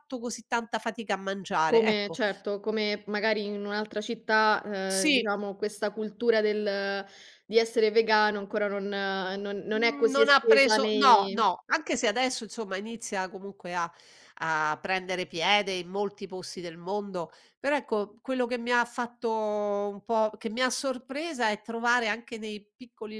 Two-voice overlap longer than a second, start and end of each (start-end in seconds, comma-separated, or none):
9.7-11.5